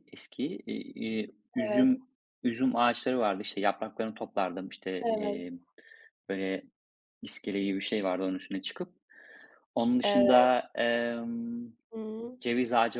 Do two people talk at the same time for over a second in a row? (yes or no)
no